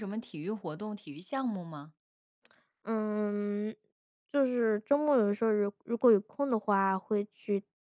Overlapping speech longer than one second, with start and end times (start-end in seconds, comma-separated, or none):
none